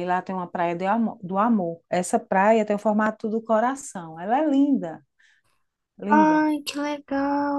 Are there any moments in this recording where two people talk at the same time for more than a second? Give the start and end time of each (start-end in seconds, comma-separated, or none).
none